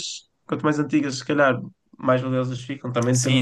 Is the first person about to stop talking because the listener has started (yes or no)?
yes